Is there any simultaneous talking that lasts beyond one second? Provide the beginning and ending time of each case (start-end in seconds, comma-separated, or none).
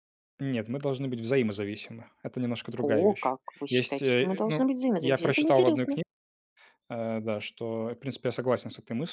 2.8-6.0